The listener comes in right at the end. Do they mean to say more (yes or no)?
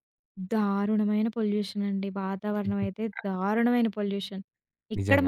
no